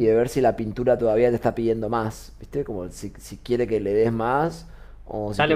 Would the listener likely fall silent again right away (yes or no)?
no